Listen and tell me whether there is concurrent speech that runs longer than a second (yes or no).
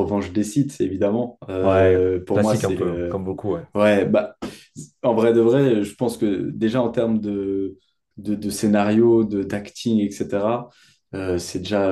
yes